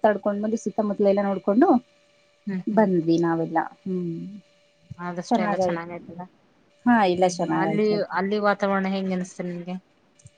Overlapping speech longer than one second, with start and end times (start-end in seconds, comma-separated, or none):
none